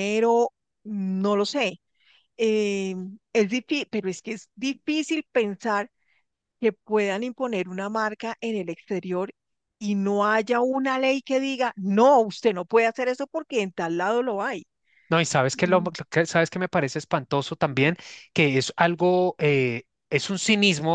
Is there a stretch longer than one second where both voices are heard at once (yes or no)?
no